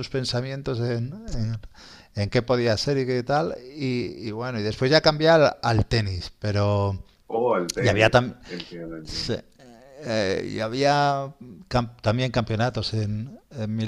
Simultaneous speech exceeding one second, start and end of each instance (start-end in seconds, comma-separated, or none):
none